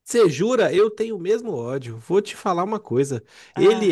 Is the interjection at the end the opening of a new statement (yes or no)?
no